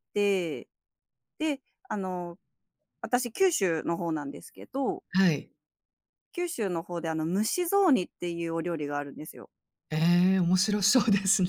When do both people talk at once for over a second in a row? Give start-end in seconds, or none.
none